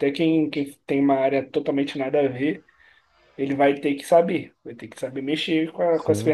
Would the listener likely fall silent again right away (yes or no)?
no